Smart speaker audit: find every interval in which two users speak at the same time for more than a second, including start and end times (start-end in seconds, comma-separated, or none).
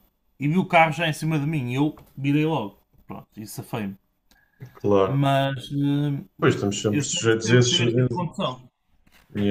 6.9-8.2